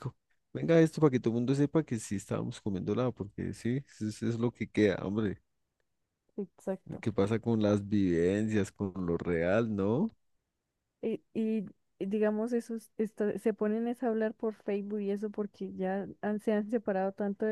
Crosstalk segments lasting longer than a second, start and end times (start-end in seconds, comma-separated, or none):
none